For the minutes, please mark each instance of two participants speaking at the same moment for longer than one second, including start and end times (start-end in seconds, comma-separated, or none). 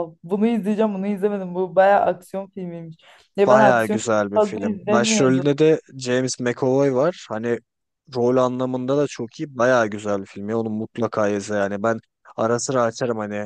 3.5-5.5